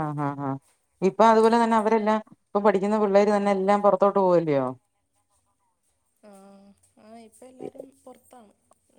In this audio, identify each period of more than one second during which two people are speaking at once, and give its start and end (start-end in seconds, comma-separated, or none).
none